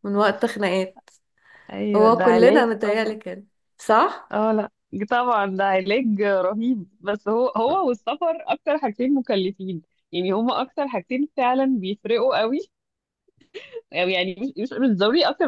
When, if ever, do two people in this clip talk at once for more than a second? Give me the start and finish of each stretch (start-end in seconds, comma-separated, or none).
1.9-3.2